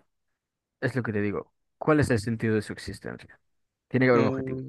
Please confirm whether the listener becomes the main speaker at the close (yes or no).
yes